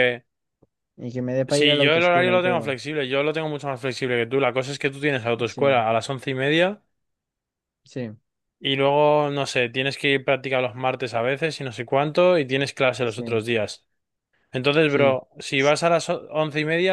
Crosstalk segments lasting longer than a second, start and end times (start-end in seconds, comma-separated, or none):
1.5-2.7